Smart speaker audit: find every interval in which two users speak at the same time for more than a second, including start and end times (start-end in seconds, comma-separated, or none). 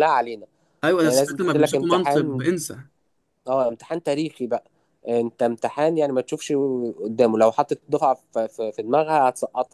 1.0-2.4